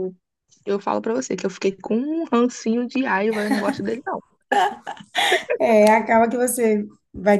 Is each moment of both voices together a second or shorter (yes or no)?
yes